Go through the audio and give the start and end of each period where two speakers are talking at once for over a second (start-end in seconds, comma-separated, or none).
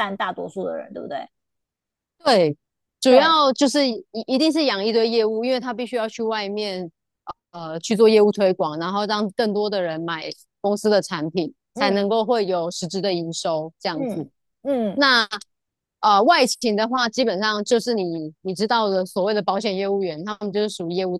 none